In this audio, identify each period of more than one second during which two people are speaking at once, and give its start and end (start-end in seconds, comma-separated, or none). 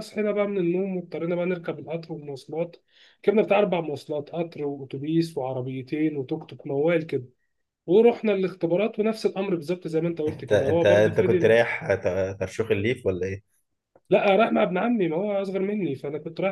10.3-11.5